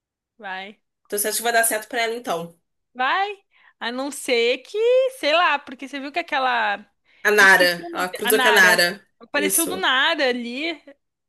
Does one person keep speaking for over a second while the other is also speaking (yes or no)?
yes